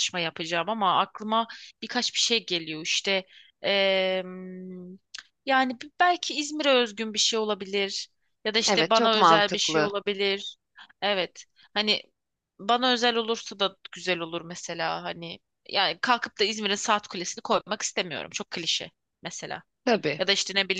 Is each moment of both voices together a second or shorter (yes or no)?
no